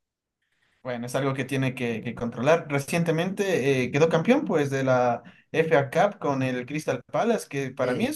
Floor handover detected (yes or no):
no